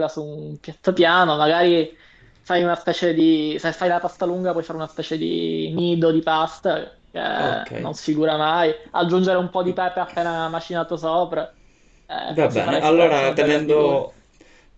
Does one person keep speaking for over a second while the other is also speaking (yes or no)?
yes